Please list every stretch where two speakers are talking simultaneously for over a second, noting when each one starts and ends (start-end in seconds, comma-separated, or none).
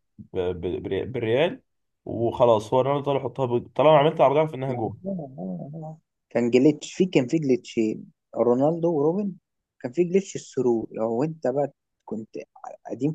none